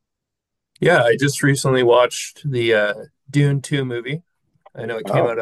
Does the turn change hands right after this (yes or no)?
no